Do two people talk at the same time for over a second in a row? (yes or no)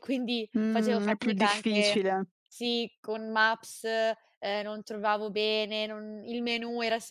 yes